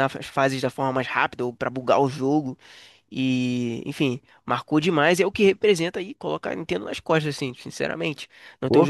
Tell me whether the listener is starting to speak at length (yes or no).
no